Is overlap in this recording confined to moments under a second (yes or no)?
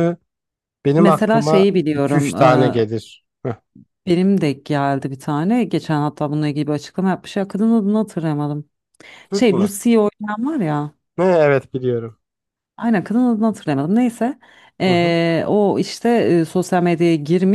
no